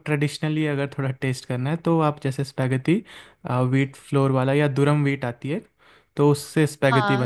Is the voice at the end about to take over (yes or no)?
yes